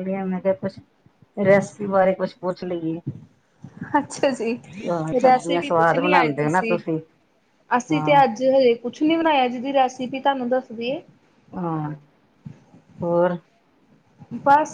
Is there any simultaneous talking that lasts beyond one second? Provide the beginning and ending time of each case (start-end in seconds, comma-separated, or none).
5.2-6.6